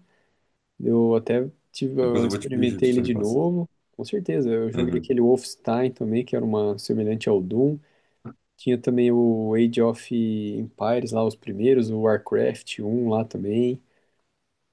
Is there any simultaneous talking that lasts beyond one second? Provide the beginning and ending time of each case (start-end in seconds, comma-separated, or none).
2.0-3.4